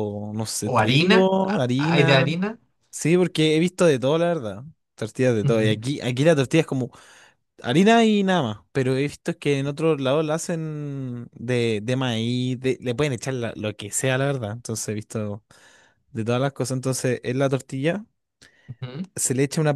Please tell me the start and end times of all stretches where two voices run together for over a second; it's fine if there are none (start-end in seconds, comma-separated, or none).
0.6-2.3